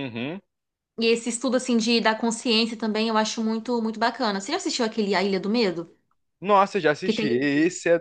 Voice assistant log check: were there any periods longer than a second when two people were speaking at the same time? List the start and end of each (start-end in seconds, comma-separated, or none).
none